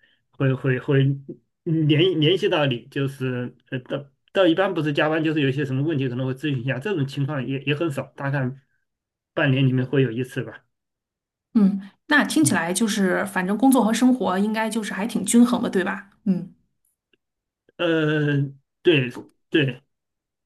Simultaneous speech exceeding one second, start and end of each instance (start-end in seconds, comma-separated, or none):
none